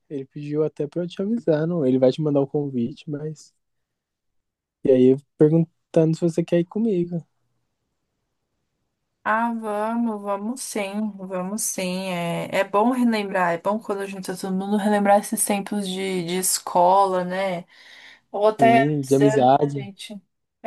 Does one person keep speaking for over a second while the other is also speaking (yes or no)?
yes